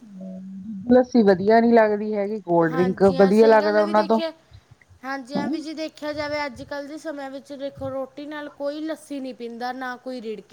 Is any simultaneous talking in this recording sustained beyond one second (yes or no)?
yes